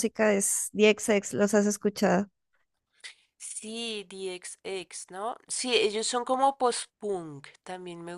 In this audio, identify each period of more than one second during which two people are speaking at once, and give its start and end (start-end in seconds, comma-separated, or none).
none